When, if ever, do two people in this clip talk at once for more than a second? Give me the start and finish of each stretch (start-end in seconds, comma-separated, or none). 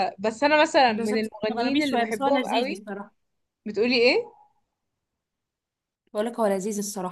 0.9-2.8